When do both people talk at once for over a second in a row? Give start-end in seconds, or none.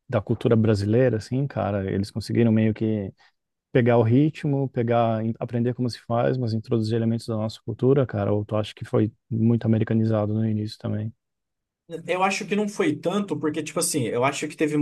none